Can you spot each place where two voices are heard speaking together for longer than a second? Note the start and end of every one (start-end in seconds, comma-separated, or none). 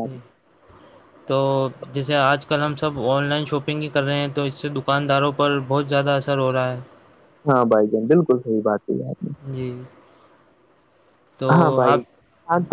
none